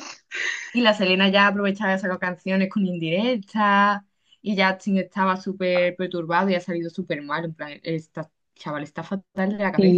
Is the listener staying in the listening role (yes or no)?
no